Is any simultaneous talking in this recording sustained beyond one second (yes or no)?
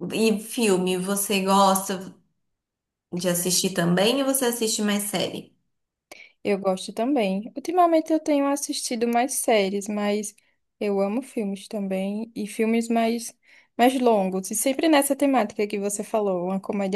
no